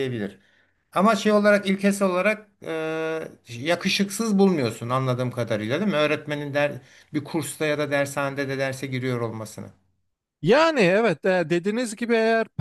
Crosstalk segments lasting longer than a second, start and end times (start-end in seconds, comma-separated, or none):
none